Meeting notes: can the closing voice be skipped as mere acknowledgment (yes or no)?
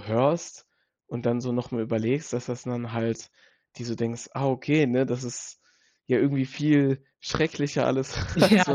no